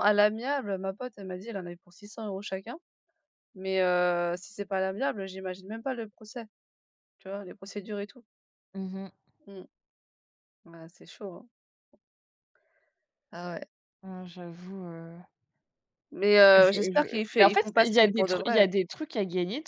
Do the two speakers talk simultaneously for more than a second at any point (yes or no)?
yes